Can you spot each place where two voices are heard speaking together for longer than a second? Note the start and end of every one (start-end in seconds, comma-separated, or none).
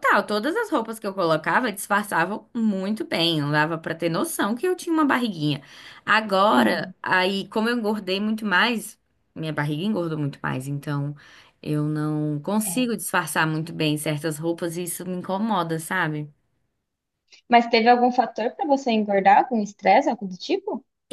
none